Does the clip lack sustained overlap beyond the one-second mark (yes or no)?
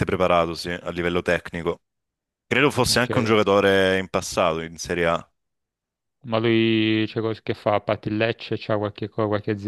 yes